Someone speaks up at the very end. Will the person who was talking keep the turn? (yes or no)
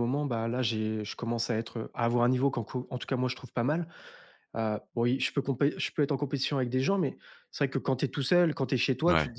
yes